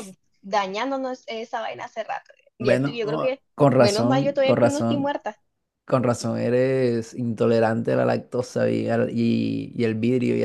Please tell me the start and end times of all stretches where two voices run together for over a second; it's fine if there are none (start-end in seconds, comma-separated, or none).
2.6-5.2